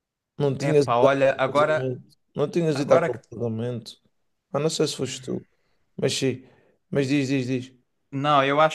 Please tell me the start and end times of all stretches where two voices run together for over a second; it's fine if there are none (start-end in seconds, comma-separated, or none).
0.6-1.9